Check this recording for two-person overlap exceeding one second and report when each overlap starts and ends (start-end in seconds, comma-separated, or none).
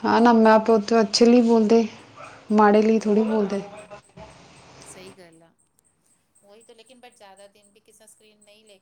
none